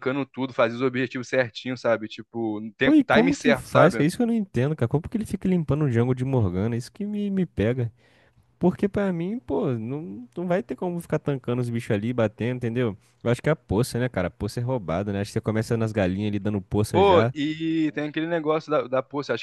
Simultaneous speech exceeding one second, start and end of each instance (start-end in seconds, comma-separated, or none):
2.8-4.1